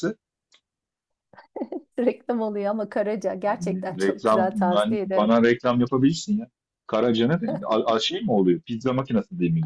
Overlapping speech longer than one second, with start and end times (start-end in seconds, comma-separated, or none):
4.0-5.3